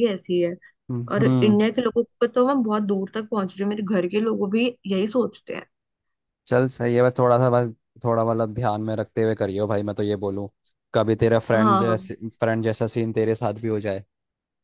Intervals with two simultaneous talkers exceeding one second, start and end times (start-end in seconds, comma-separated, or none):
none